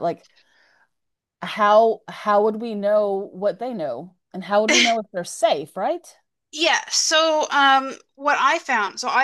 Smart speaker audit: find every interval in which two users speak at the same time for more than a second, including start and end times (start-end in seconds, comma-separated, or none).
none